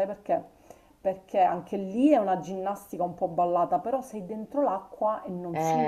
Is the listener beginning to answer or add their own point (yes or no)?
yes